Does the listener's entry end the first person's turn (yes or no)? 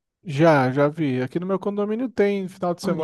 yes